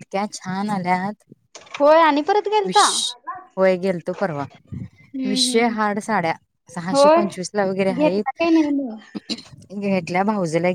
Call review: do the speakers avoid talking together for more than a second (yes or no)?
no